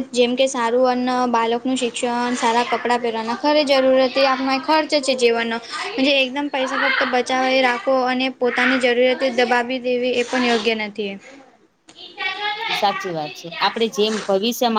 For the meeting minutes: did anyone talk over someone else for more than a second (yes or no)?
no